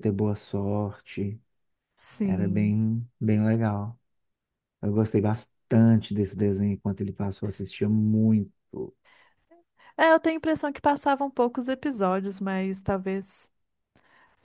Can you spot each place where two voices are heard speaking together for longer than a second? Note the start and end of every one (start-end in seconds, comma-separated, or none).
none